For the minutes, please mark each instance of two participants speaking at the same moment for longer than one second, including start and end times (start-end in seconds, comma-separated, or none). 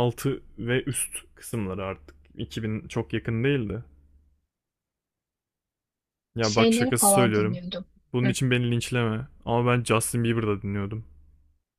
6.4-7.6